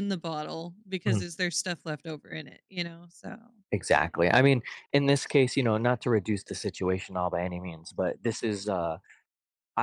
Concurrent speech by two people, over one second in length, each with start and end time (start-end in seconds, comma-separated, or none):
none